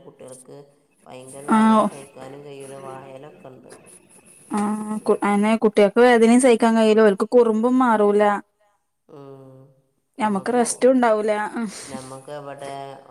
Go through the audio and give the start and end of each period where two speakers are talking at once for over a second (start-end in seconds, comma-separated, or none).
10.2-11.8